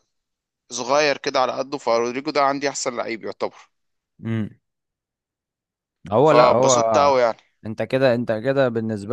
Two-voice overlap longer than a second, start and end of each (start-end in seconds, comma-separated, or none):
none